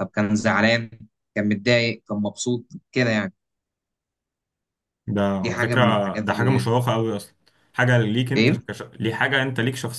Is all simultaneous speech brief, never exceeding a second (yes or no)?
no